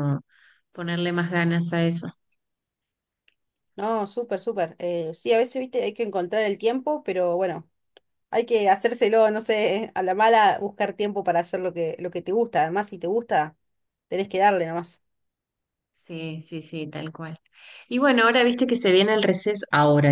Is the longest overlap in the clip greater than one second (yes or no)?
no